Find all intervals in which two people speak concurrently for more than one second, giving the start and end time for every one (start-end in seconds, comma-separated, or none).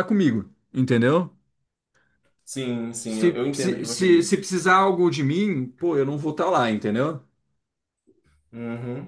3.0-4.4